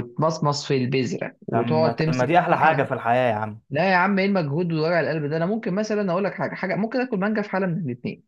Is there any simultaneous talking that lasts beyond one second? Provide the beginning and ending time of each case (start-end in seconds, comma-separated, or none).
1.5-2.9